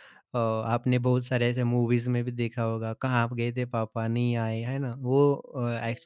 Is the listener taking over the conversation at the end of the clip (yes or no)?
no